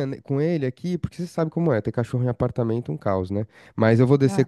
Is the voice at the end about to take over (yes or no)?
no